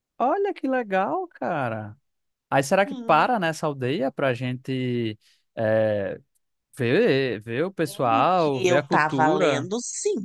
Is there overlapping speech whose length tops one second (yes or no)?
yes